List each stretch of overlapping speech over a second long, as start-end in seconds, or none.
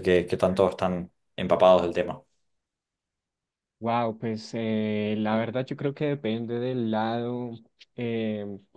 none